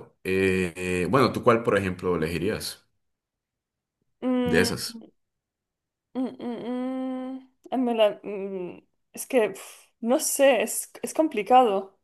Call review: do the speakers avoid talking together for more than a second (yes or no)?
yes